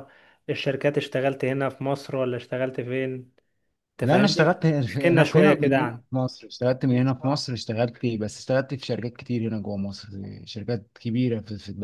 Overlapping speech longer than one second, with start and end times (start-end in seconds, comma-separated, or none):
4.0-6.0